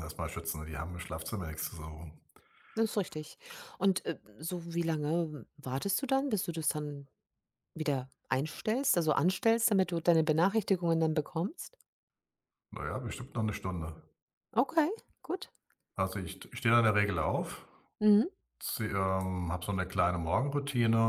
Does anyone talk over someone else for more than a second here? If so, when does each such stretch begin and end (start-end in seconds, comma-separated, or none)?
none